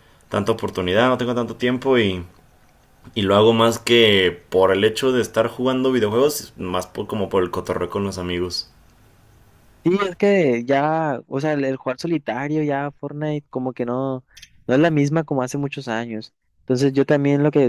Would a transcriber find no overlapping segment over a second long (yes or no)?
yes